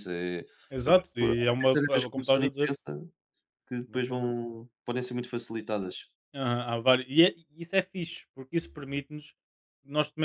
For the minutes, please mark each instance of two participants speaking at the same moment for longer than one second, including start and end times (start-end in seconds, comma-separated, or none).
0.8-2.7